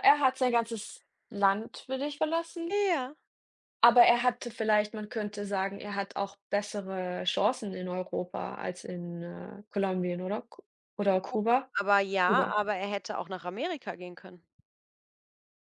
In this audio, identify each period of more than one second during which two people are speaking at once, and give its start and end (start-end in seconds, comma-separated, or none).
none